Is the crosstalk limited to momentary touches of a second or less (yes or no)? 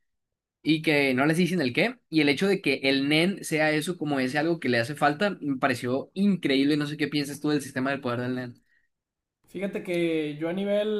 yes